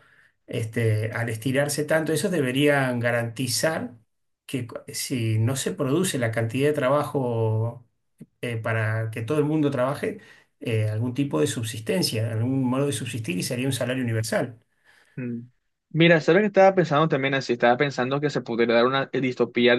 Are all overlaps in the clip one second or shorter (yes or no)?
yes